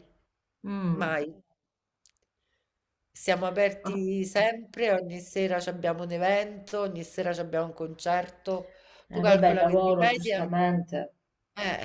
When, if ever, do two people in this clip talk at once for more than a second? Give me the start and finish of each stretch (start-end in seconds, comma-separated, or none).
9.1-10.4